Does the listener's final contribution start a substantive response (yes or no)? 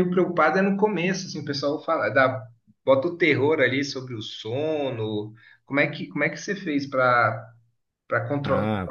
no